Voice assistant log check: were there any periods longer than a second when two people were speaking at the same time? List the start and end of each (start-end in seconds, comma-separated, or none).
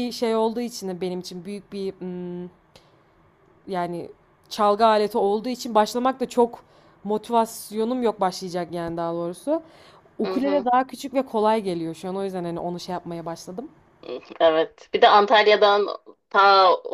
none